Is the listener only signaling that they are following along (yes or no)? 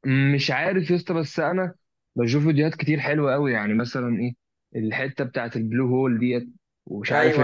no